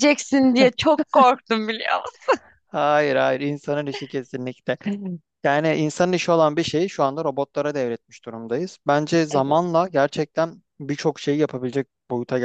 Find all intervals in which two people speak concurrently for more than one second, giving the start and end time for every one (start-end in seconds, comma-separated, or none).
none